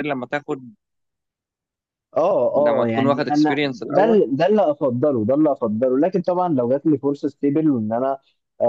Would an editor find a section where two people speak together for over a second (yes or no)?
yes